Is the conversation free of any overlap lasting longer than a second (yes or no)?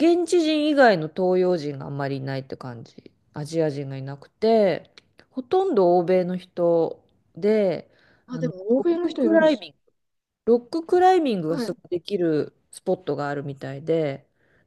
no